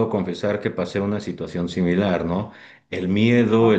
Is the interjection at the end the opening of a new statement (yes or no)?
no